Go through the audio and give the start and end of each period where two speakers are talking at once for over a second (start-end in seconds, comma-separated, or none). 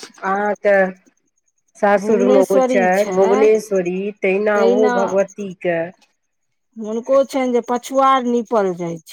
2.0-3.6